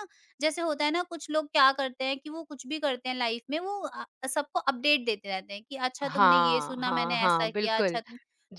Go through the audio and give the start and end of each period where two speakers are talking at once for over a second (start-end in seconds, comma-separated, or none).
6.0-8.0